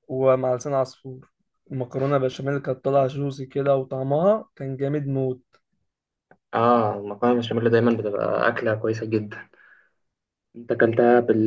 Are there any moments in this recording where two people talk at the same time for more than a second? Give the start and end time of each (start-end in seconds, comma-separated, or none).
none